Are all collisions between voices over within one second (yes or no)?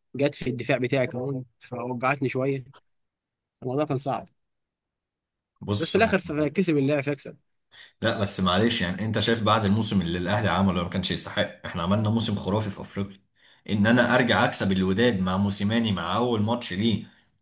yes